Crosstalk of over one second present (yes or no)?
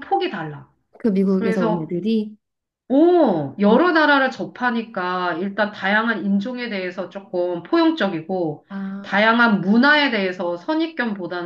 no